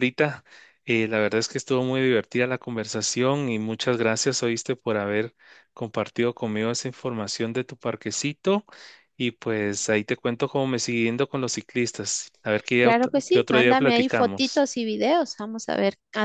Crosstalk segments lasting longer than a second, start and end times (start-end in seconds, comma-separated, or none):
12.8-14.7